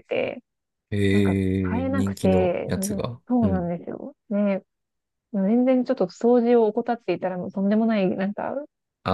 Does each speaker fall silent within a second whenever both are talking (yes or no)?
no